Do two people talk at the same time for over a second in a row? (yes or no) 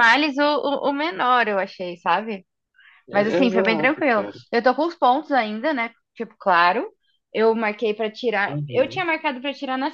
yes